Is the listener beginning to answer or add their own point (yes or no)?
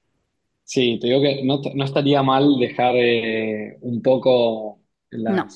no